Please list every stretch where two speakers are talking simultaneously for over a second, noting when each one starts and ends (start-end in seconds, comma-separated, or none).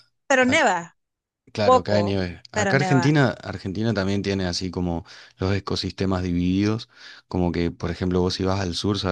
1.6-3.2